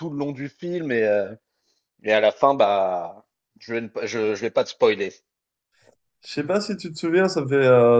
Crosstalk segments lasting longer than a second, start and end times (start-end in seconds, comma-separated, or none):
none